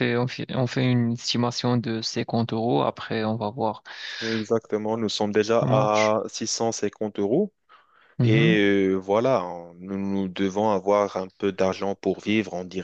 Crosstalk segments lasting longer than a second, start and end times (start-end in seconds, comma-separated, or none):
none